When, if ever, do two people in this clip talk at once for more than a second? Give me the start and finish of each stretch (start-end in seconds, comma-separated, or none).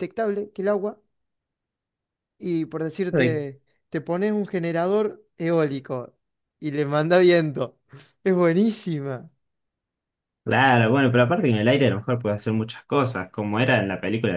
none